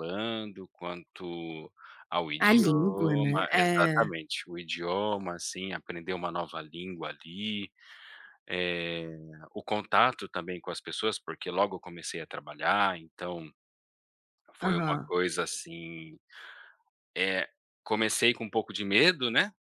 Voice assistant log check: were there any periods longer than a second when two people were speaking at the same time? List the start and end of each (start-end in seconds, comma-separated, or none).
2.4-4.1